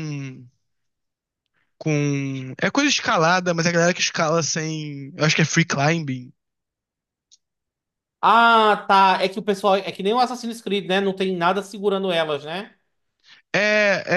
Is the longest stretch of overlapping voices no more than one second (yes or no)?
yes